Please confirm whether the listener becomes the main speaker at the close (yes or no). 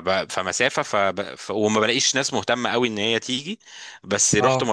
no